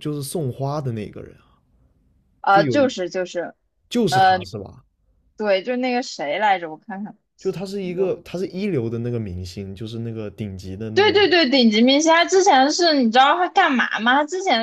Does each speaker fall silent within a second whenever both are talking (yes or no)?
yes